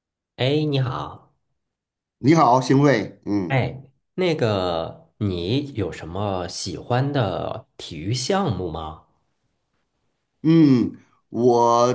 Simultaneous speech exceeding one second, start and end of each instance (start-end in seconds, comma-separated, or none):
none